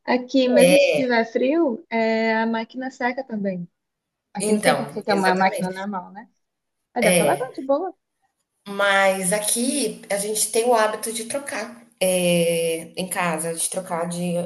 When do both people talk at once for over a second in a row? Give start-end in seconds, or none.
4.4-5.8